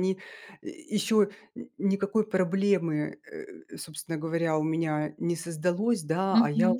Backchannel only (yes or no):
yes